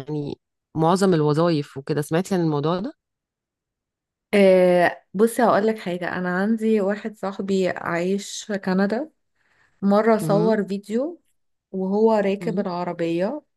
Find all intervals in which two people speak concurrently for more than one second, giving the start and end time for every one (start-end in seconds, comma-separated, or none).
none